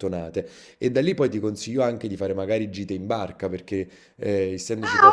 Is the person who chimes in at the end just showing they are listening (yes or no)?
no